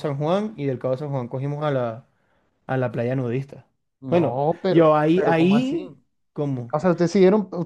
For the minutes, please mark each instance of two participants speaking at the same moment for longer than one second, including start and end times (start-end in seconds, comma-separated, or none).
4.1-5.8